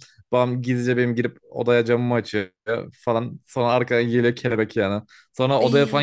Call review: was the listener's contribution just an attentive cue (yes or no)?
yes